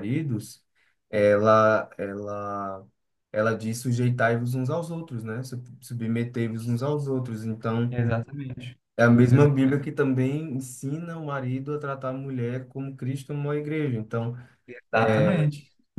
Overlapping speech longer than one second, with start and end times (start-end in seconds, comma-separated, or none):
none